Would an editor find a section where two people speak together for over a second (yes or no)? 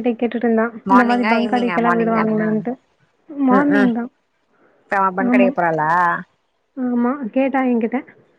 yes